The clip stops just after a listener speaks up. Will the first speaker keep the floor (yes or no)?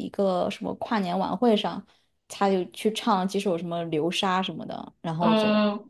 no